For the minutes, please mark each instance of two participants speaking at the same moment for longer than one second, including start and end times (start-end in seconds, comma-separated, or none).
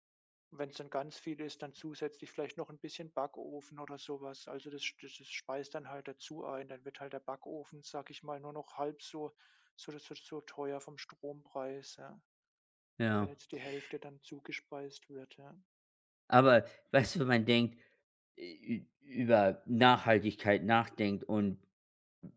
none